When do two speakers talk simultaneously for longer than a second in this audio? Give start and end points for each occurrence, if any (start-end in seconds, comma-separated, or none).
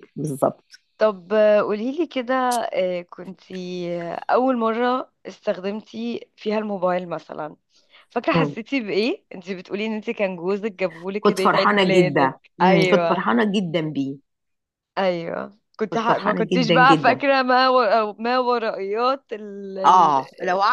11.2-13.2, 15.9-17.2